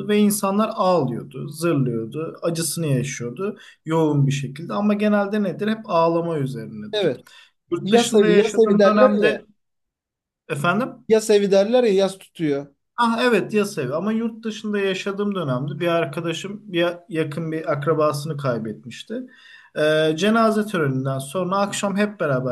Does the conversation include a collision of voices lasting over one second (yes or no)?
yes